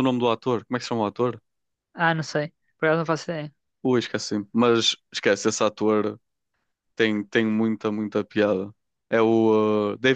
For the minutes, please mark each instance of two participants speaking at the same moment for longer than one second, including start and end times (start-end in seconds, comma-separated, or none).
none